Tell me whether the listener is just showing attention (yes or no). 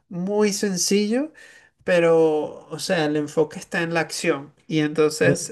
yes